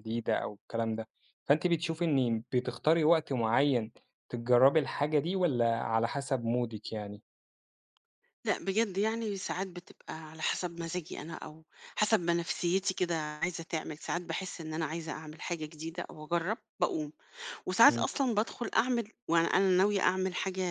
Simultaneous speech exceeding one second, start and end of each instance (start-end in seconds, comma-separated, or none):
none